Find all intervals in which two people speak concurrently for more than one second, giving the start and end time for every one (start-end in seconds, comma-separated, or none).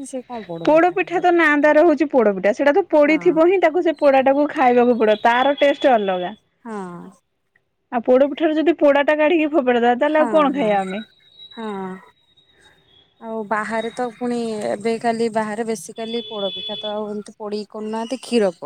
none